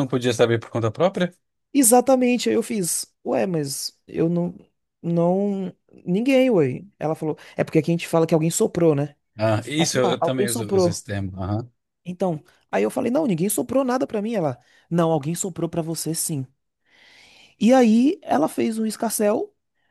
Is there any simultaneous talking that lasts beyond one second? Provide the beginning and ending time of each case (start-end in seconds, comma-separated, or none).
9.8-11.0